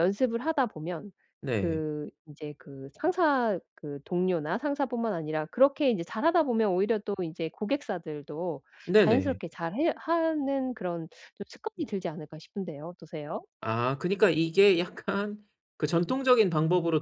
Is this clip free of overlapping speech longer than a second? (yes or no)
yes